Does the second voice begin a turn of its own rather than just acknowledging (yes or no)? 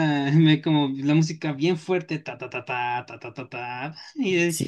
yes